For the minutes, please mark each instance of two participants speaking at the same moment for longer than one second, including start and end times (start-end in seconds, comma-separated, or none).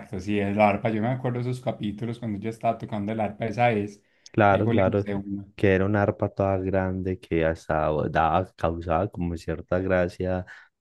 none